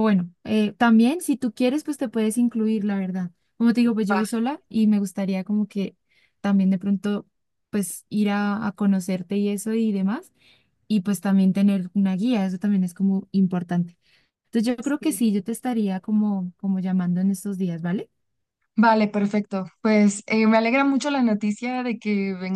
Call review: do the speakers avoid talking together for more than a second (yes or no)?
yes